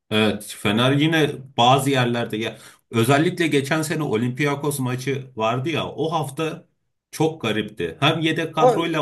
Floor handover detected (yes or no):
no